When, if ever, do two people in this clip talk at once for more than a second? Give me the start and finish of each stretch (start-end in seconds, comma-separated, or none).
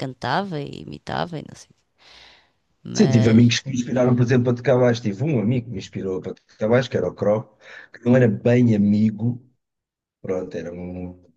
none